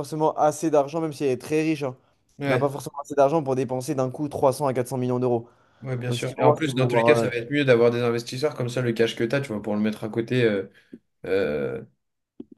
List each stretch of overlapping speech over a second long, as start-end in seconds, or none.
6.1-7.3